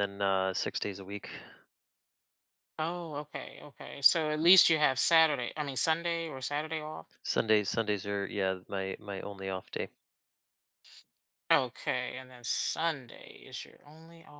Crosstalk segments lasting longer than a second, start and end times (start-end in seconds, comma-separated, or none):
none